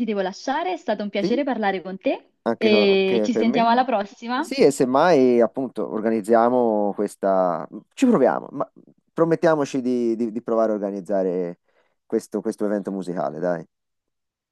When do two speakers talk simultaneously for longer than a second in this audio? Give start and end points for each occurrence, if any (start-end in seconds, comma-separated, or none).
2.4-3.6